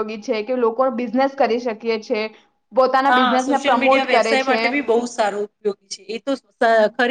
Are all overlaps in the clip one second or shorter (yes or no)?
no